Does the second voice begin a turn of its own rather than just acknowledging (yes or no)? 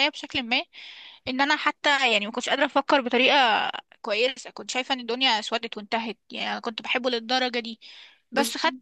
no